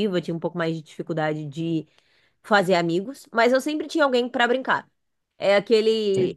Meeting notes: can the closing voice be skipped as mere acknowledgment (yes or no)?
yes